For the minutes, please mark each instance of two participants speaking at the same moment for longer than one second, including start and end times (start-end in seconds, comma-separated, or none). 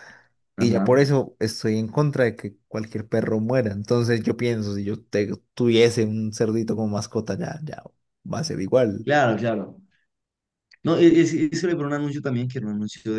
none